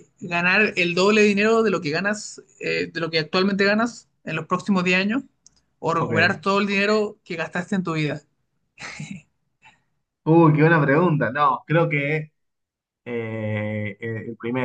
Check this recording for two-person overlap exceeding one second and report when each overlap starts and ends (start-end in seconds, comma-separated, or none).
none